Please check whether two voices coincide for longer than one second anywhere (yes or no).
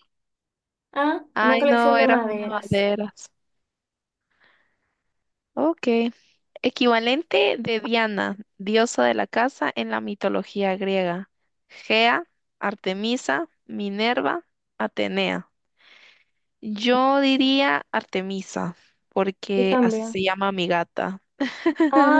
yes